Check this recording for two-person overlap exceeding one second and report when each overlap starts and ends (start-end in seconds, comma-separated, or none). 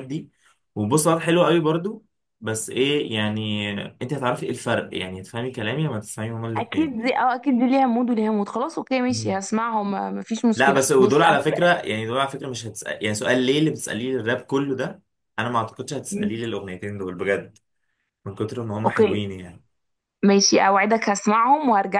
10.6-11.8